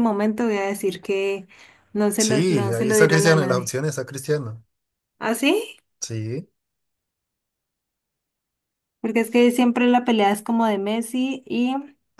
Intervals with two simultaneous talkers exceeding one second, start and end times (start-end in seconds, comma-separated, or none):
2.2-3.7